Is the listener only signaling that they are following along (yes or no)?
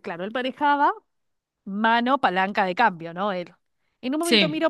yes